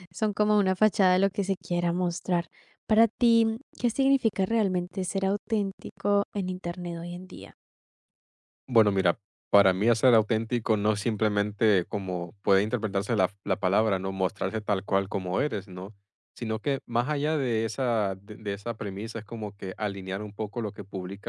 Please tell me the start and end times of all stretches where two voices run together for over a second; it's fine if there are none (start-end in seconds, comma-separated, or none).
none